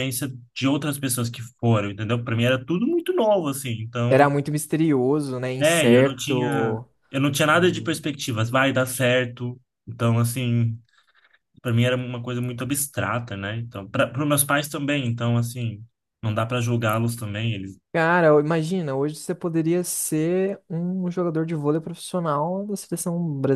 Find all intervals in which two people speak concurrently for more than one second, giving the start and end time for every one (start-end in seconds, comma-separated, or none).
5.6-6.8